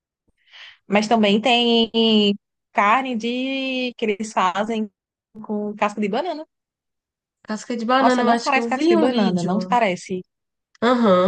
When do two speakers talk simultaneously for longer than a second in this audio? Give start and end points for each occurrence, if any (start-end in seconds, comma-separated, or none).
8.0-9.8